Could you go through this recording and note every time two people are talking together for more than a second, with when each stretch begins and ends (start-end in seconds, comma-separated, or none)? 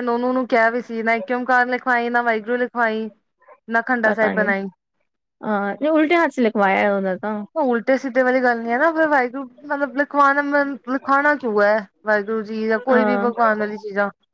none